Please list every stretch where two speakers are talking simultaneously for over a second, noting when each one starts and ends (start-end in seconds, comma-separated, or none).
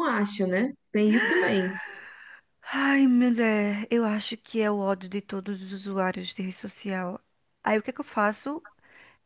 none